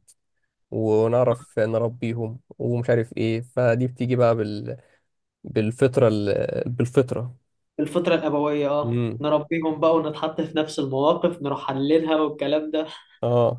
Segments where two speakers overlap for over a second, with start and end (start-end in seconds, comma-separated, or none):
none